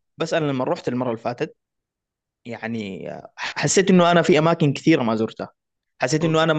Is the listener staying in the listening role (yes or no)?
yes